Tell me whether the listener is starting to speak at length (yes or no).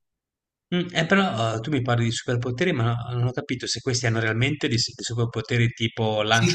yes